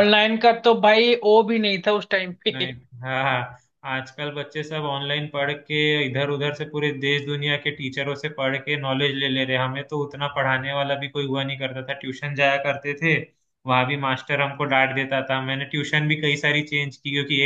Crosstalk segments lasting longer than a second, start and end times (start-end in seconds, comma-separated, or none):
none